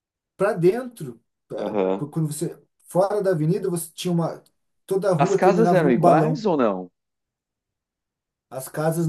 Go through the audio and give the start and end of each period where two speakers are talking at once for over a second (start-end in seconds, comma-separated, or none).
5.2-6.5